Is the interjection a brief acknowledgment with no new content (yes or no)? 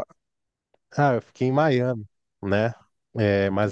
yes